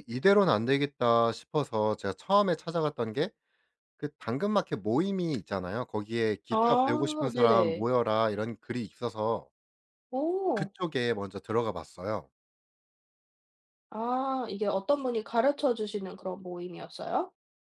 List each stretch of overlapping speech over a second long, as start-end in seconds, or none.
6.5-7.9